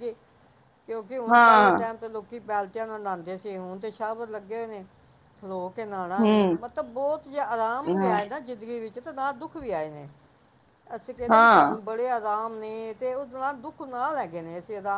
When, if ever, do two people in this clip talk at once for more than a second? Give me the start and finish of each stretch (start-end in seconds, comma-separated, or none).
none